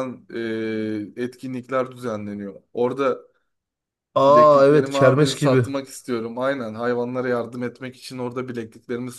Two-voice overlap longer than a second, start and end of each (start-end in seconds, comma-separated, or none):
4.2-5.7